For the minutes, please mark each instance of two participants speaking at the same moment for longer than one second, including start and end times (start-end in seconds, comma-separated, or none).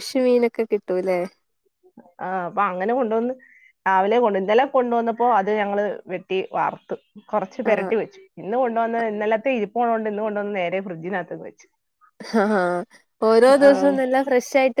none